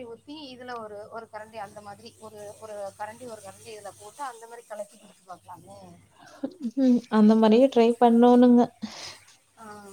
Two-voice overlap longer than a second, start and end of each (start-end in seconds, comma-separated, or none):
none